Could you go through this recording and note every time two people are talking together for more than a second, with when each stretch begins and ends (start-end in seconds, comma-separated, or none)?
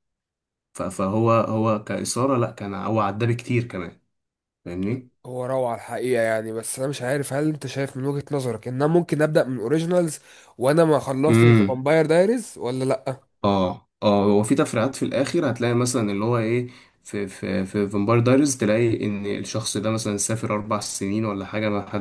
none